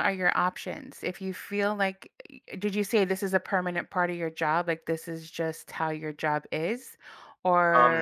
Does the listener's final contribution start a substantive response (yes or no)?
yes